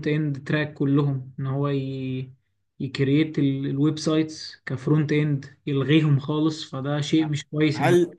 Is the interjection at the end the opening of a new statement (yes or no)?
yes